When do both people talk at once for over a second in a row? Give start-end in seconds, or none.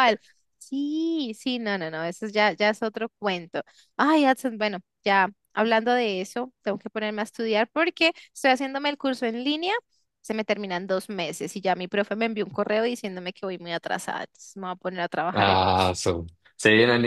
none